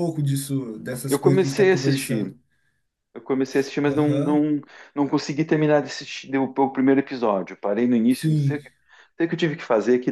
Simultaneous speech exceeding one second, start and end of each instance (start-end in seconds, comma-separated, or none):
1.1-2.3